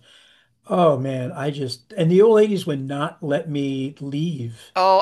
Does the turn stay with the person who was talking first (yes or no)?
no